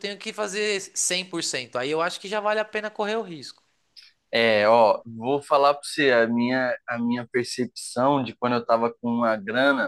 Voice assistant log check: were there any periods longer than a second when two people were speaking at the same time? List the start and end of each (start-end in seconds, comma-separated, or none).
none